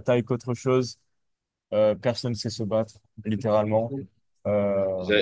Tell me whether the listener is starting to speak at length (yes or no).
yes